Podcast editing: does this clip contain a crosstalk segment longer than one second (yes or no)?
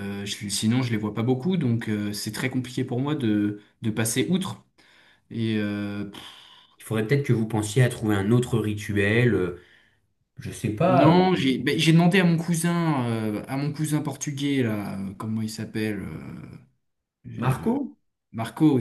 no